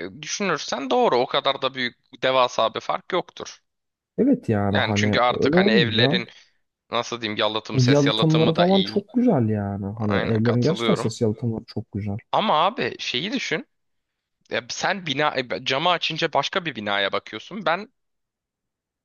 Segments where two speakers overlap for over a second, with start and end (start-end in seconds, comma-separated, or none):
4.7-6.2, 7.7-9.1, 10.0-11.2